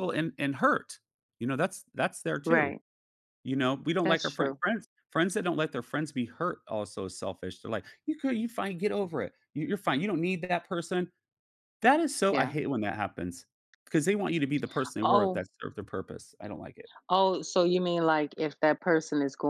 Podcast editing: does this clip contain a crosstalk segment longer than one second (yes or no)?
no